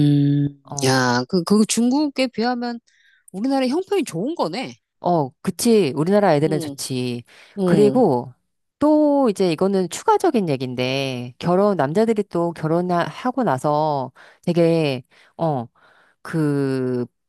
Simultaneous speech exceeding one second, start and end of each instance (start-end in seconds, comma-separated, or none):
none